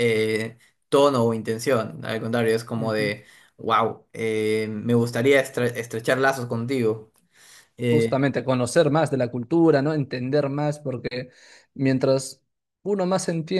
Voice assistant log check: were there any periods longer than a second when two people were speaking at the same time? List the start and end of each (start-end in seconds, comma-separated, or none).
none